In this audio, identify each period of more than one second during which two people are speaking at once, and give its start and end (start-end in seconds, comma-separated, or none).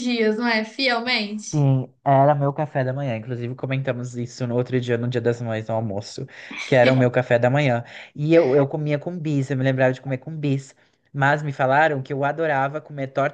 none